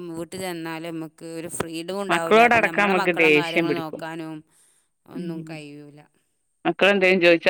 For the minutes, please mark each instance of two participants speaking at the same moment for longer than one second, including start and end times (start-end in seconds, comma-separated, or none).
2.1-4.0